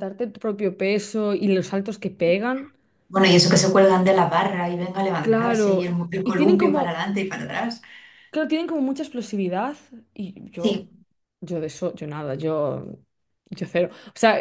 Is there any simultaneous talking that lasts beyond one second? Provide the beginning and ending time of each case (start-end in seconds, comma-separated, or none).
5.2-7.1